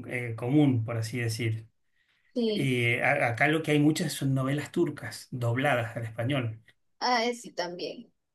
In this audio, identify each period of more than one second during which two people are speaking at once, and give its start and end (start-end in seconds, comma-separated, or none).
none